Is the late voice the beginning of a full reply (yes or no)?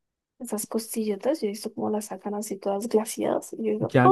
yes